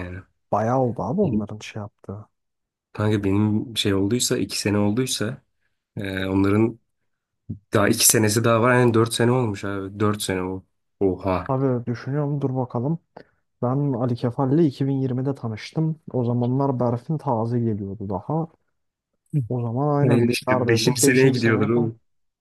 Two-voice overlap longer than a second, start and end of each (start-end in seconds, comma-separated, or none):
20.0-21.9